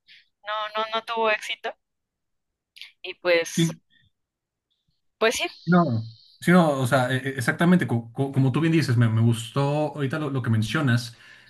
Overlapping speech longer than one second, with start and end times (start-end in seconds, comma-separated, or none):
none